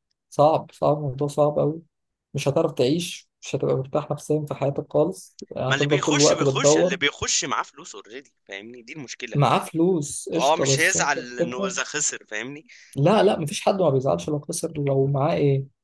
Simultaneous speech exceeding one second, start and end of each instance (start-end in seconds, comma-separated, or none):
5.7-7.0, 10.4-11.7